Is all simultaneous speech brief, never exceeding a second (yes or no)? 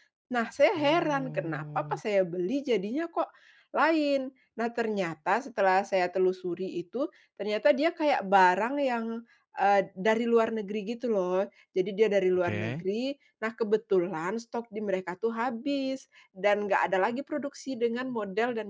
no